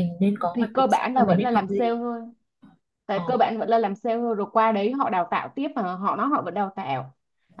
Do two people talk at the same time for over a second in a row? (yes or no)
yes